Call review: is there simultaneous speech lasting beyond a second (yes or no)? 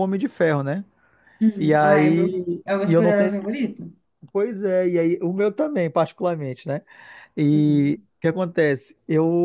yes